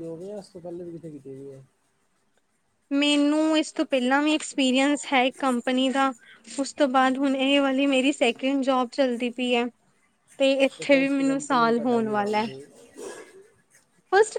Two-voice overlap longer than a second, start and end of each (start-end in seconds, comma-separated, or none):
10.9-12.5